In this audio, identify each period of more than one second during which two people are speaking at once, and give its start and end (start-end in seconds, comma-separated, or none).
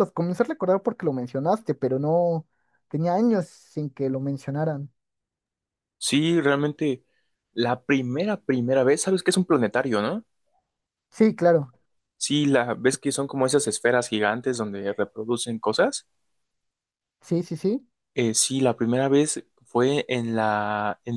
none